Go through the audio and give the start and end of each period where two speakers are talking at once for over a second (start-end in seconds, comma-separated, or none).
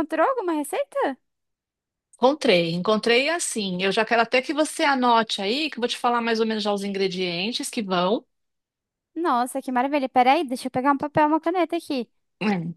none